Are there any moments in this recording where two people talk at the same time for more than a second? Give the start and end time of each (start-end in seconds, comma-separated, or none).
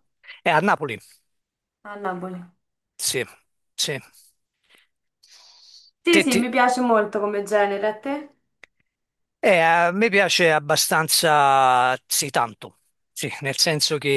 none